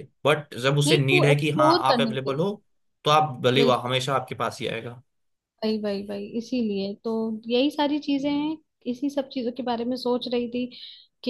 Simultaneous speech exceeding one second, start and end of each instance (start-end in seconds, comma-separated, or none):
0.8-2.5